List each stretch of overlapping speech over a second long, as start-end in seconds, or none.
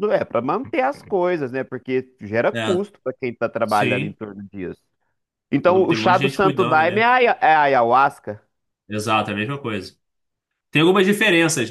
5.7-7.1